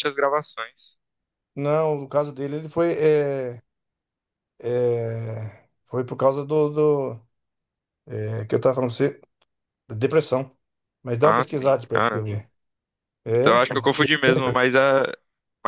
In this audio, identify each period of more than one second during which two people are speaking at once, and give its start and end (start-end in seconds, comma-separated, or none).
11.2-12.4